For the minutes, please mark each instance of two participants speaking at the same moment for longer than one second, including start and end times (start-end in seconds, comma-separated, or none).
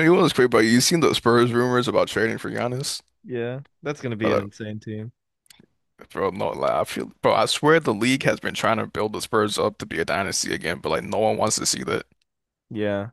none